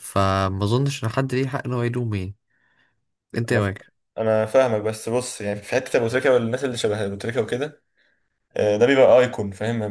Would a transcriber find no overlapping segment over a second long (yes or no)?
yes